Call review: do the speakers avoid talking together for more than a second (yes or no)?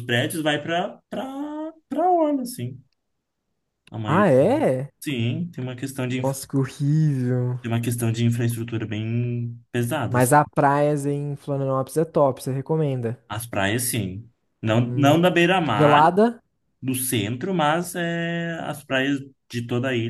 no